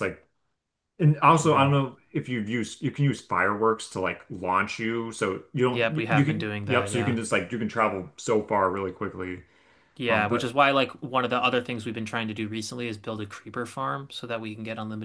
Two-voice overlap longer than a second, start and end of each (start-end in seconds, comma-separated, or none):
5.7-7.2